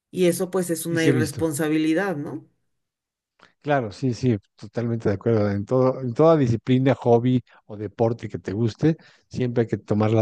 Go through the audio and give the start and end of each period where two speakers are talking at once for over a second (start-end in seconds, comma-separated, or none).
none